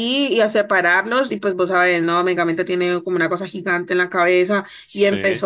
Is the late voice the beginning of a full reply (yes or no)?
no